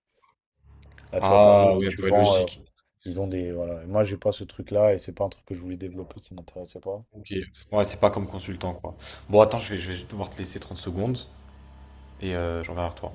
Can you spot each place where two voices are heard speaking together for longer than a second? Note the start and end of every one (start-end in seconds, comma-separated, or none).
1.2-2.5